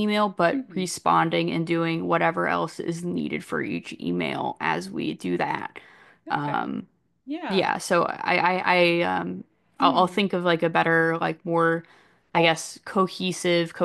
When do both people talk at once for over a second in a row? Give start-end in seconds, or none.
none